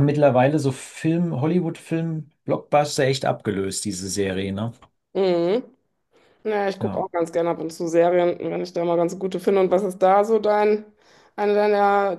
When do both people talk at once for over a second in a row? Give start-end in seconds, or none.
none